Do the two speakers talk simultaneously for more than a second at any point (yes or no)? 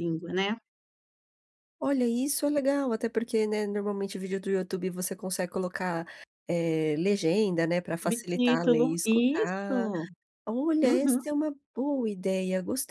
yes